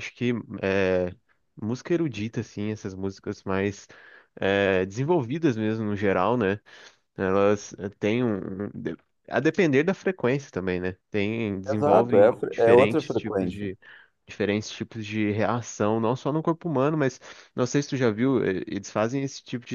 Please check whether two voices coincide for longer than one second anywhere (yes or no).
yes